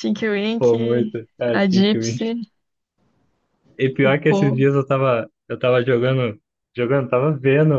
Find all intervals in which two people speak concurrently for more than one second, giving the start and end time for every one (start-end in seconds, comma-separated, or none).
0.6-2.3